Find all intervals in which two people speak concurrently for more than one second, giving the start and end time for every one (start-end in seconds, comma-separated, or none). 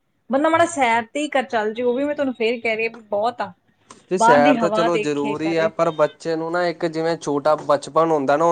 4.2-5.7